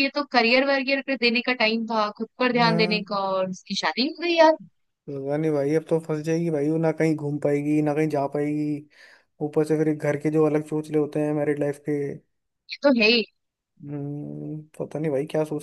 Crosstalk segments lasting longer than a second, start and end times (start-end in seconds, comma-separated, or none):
none